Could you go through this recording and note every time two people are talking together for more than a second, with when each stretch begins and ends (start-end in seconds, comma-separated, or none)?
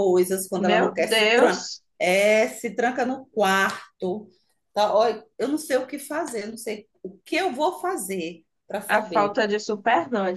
0.5-1.8